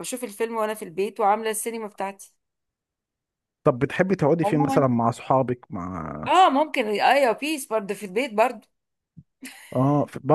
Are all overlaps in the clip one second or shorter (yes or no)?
yes